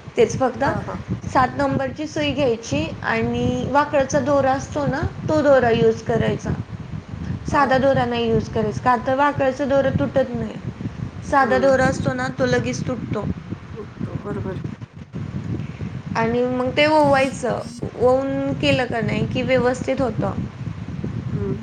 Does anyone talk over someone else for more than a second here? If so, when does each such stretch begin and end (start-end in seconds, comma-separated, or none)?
none